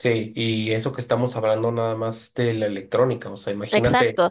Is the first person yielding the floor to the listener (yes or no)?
yes